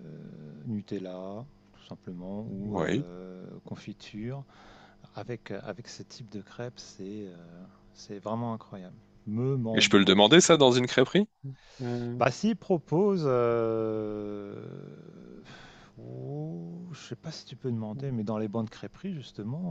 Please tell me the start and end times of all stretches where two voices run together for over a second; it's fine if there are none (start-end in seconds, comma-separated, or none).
none